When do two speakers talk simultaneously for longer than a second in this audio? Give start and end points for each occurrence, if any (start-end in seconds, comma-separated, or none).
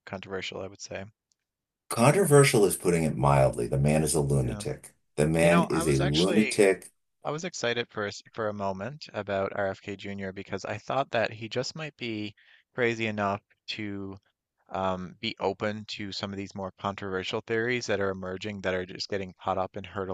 5.4-6.6